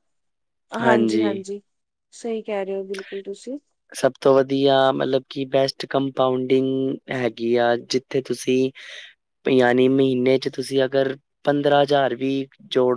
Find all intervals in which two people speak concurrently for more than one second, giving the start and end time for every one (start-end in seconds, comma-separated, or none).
none